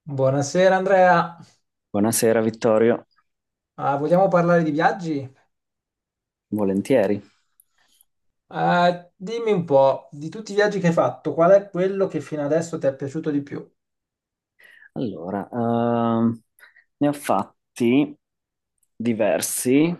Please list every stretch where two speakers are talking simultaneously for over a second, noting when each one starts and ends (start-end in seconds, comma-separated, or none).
none